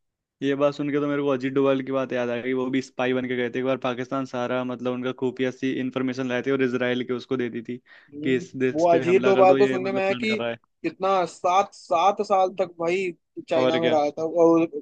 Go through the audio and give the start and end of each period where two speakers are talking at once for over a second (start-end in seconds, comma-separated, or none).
8.2-10.4